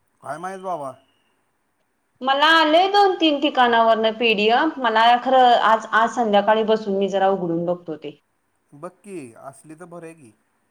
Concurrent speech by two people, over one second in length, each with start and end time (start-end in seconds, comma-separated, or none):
none